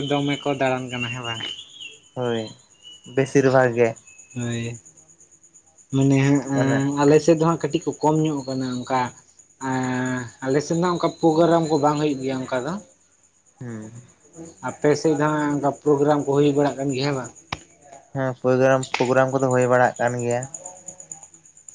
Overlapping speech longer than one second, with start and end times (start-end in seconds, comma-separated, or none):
none